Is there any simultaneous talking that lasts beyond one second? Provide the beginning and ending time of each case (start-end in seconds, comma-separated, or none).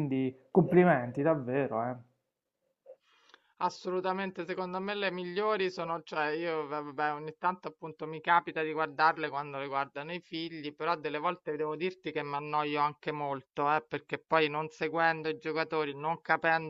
none